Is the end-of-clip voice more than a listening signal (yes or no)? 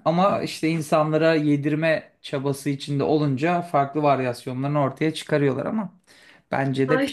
yes